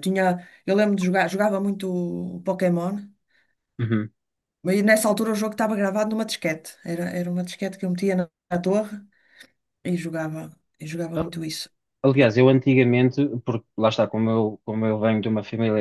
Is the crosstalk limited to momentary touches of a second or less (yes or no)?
yes